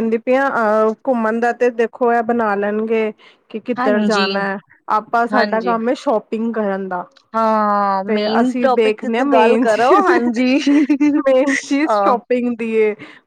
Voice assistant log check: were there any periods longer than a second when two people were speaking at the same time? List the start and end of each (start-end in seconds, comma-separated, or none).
8.1-10.1